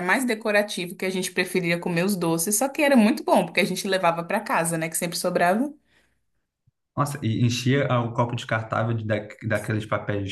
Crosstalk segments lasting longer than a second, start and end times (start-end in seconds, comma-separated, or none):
none